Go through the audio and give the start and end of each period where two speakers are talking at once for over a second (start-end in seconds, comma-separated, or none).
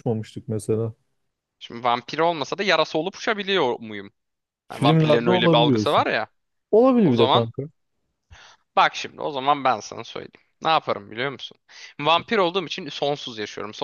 4.7-6.0